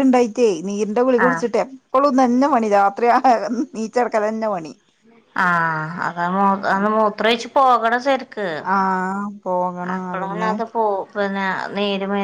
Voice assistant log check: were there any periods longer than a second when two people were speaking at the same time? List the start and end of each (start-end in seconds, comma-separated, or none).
none